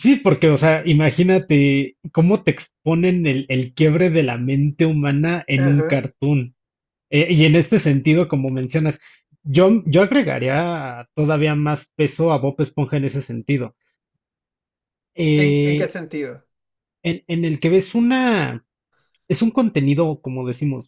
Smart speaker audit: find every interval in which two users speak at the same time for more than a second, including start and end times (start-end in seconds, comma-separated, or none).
none